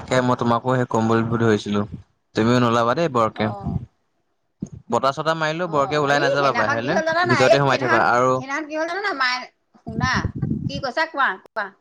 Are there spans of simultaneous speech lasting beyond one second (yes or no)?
yes